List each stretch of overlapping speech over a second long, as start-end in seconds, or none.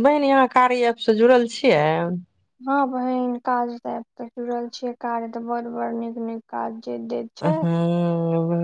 none